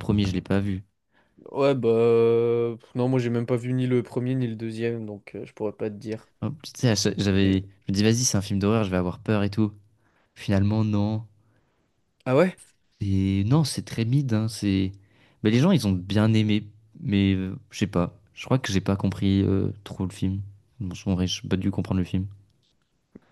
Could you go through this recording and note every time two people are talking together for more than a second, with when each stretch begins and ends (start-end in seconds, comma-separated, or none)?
none